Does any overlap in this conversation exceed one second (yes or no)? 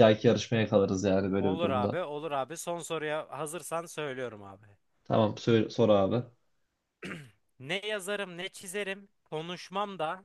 no